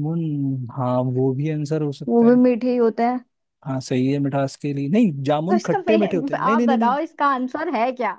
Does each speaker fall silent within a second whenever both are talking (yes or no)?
no